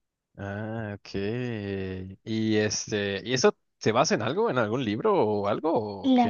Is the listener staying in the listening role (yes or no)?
no